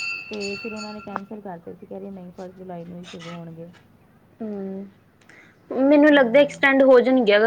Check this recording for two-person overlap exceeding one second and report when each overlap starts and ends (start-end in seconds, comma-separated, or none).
none